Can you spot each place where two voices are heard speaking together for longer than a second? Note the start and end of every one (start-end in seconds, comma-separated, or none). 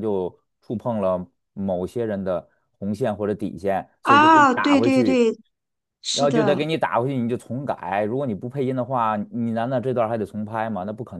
4.0-5.2